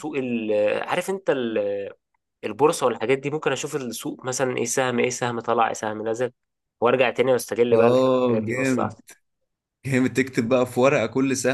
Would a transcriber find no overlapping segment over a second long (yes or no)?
no